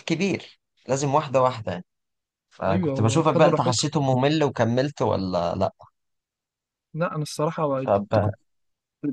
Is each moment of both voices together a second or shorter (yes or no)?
no